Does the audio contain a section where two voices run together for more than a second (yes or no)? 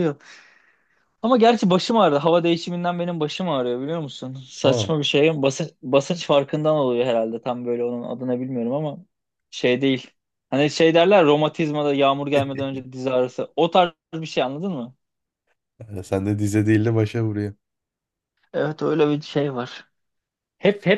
no